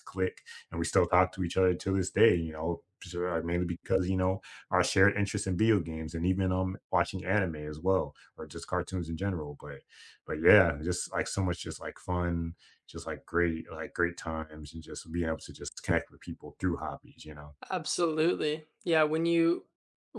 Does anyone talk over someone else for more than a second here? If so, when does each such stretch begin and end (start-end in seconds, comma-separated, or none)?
none